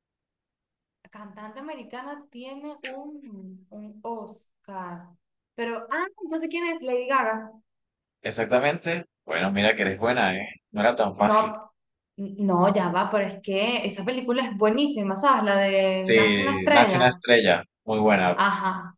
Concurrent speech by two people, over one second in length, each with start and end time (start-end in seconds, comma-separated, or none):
15.9-17.2